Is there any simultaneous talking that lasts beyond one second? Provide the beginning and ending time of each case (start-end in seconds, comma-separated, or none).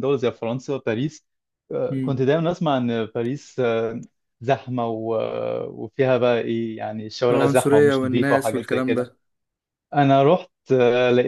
7.3-9.1